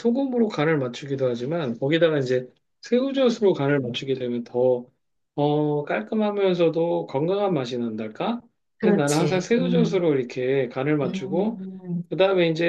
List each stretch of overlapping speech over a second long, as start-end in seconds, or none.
8.8-10.1